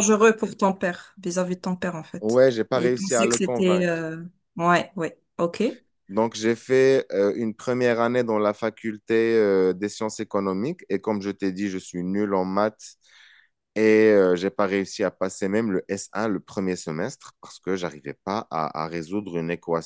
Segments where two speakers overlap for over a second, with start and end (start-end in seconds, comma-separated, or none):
2.2-4.1